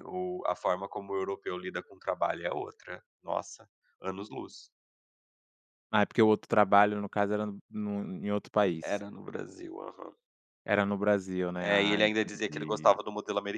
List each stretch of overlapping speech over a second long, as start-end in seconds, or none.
11.6-13.0